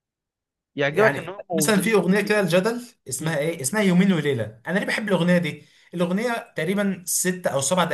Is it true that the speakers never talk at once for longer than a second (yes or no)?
no